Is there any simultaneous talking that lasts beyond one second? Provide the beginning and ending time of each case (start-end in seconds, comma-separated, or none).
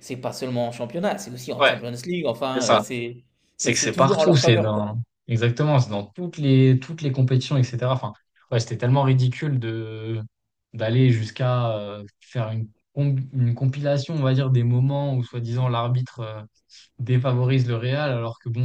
3.6-5.0